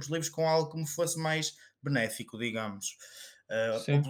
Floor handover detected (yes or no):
no